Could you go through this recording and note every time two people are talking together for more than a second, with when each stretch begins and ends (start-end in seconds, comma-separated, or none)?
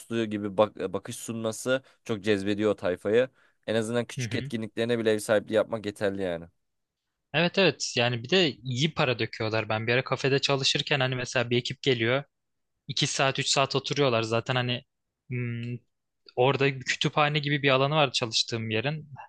none